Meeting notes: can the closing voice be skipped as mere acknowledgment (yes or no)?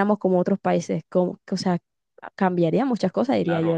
no